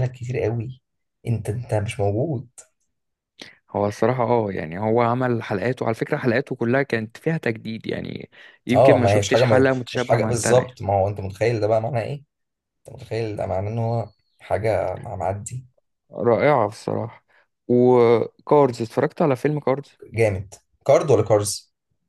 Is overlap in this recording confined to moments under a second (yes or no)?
no